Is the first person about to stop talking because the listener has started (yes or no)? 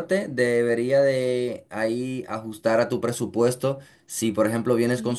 no